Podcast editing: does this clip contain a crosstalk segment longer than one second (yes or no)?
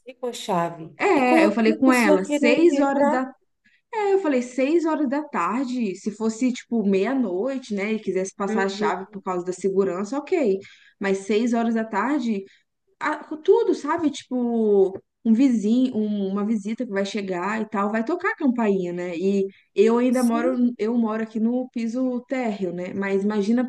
yes